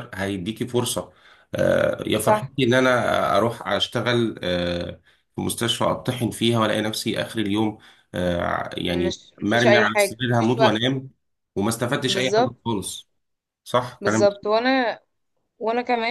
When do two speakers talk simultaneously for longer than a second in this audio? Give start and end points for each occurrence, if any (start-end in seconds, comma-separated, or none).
8.9-10.8